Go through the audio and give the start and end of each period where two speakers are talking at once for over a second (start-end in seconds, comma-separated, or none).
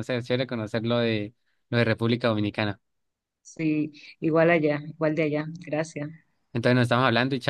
none